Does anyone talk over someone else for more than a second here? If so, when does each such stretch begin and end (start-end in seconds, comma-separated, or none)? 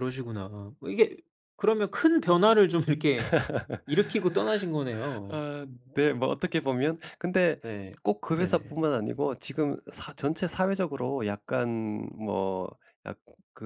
none